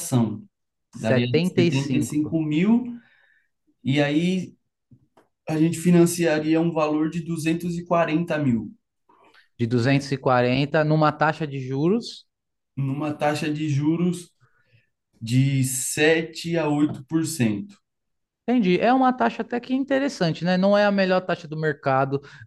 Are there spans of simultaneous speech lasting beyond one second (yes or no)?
yes